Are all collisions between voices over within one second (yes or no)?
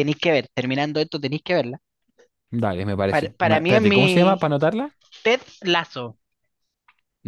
no